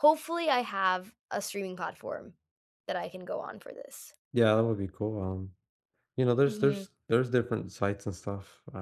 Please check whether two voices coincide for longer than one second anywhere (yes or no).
no